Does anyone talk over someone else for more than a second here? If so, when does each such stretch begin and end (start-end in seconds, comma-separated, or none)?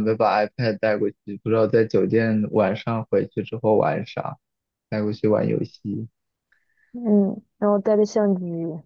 none